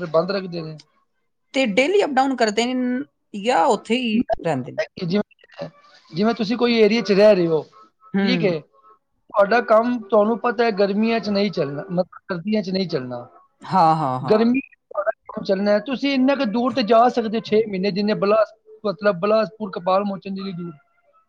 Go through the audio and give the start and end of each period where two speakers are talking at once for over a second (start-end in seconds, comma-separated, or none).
none